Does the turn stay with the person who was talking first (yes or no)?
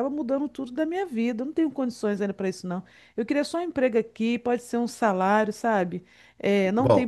no